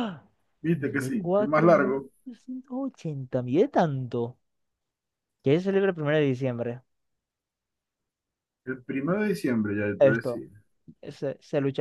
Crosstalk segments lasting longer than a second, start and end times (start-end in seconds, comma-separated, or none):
0.7-2.1